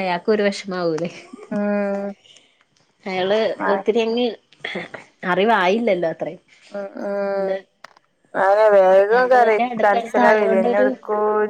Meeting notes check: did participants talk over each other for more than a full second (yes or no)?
yes